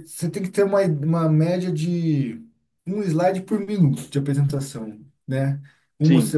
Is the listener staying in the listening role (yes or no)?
yes